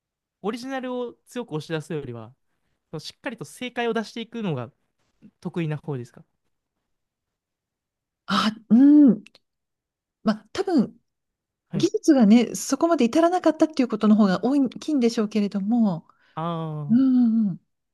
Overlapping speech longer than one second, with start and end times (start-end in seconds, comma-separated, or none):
none